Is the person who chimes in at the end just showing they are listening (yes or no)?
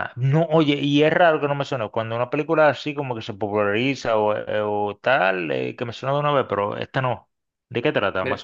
no